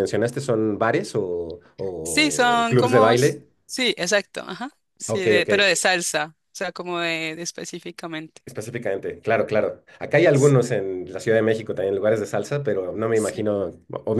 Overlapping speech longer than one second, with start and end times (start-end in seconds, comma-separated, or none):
2.0-3.5